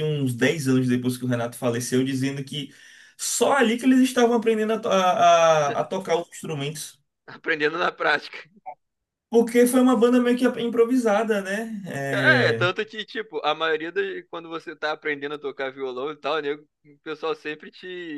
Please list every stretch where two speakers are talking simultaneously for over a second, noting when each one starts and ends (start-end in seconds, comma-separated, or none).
none